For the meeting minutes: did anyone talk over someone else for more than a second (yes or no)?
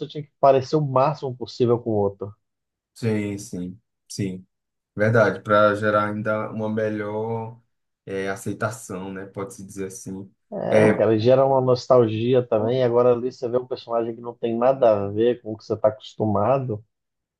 no